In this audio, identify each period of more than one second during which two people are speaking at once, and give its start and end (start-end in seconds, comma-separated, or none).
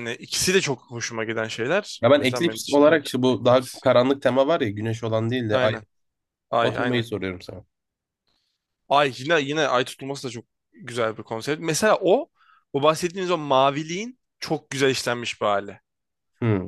2.0-3.9